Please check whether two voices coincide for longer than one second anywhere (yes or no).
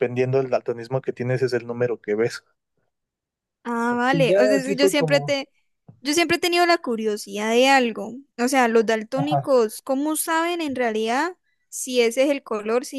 yes